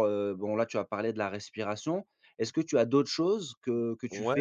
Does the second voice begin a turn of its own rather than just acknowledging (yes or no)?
yes